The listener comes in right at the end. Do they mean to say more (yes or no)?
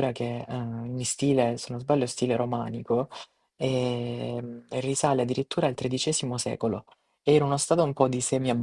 no